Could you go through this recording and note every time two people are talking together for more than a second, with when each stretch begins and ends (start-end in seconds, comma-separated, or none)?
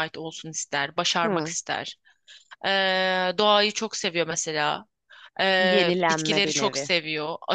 5.6-6.9